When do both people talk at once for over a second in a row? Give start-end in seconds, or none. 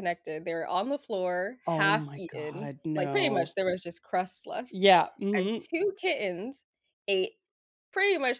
1.6-3.5